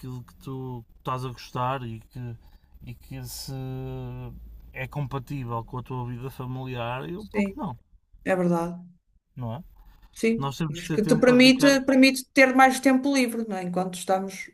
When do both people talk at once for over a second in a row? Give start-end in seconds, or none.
10.4-11.8